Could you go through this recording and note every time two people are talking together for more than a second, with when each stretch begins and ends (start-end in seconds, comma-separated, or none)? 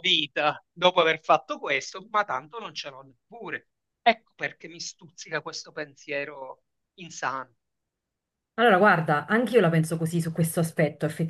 none